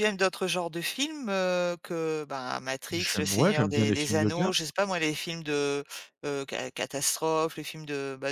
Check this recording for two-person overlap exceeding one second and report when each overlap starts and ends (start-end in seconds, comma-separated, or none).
2.9-4.5